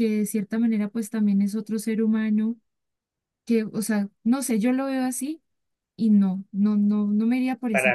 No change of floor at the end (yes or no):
no